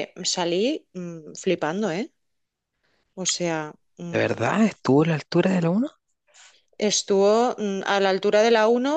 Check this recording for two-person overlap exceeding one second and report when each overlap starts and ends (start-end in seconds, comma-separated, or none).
none